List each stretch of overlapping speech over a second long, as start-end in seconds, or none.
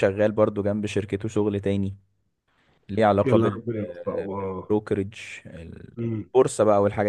3.2-4.7